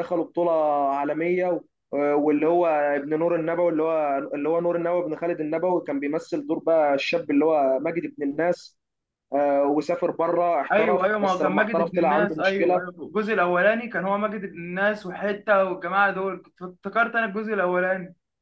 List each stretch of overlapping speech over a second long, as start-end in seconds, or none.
10.7-12.8